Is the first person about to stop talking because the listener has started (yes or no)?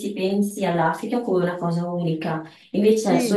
no